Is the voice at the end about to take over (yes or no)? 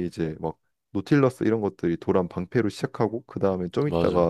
no